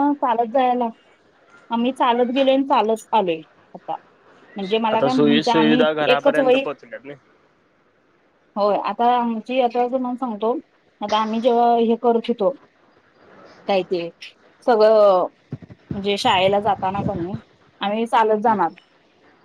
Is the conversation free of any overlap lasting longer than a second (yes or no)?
no